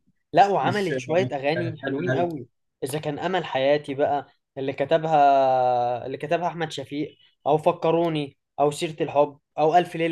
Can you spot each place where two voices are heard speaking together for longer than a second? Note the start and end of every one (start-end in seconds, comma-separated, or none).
0.6-2.3